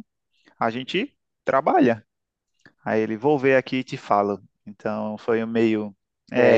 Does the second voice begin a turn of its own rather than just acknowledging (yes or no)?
yes